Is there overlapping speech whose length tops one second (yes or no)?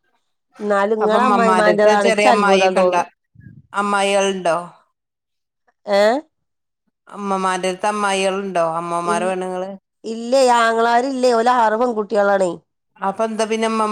yes